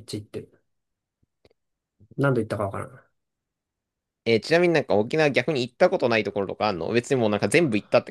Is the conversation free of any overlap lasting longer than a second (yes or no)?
yes